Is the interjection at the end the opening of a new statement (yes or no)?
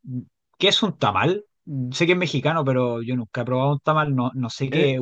yes